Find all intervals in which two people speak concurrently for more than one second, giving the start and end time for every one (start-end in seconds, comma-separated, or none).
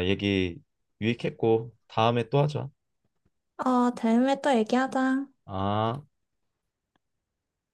none